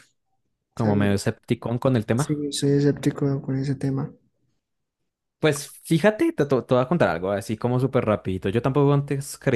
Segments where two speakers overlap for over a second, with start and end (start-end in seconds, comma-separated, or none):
none